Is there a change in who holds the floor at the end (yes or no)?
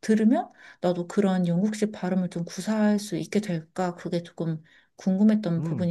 yes